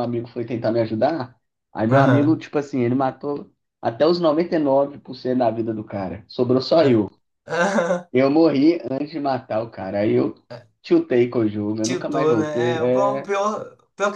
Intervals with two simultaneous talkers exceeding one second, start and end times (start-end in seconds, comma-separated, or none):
11.8-13.3